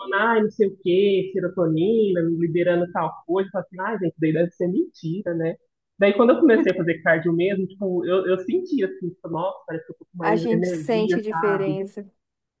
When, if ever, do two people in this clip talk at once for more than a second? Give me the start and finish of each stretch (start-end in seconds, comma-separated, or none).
10.2-11.8